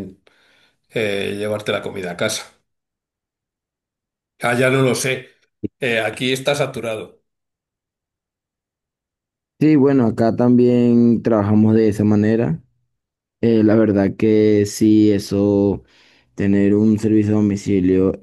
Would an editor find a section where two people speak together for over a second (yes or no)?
no